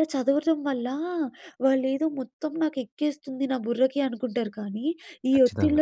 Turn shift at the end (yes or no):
no